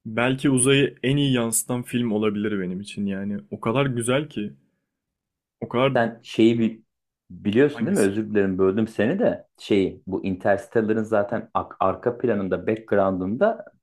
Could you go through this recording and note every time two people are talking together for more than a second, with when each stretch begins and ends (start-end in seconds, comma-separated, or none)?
none